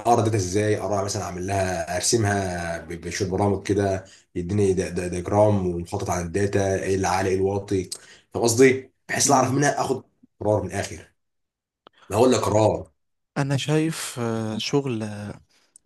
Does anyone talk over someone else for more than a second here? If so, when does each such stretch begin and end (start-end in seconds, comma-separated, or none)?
none